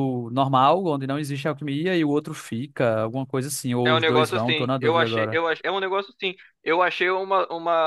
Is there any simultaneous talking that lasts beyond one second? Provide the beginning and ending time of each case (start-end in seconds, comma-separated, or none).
3.8-5.4